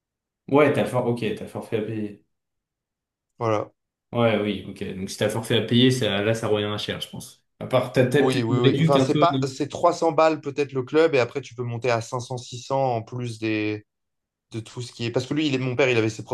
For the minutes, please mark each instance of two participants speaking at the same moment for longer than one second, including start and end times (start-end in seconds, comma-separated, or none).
8.2-9.6